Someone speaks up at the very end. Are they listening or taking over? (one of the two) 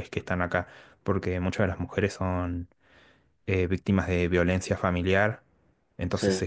listening